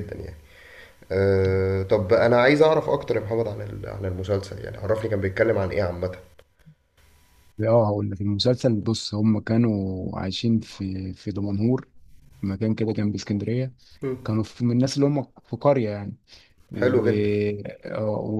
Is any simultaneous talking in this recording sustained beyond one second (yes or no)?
no